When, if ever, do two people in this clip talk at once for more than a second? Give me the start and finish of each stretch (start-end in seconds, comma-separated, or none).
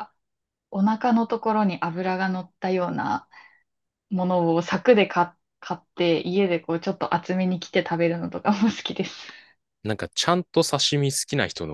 none